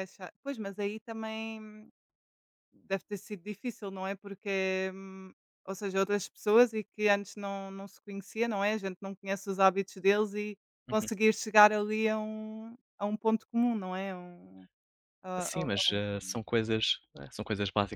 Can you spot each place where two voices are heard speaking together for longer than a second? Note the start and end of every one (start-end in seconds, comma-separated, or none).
none